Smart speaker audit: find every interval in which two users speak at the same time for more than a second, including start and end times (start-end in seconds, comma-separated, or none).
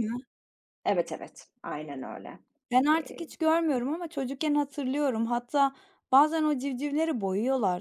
none